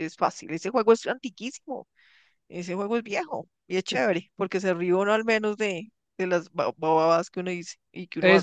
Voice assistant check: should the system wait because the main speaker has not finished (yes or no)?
no